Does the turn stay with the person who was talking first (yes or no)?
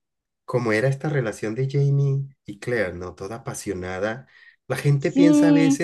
yes